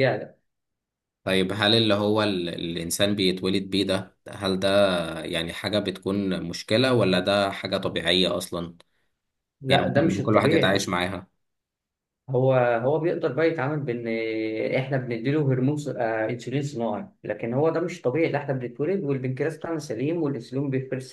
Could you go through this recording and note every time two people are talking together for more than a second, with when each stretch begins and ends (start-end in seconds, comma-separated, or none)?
9.7-10.9